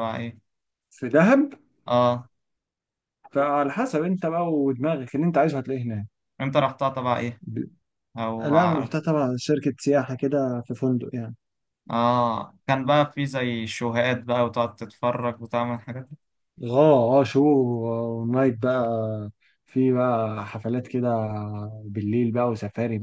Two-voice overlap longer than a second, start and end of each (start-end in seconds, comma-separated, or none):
none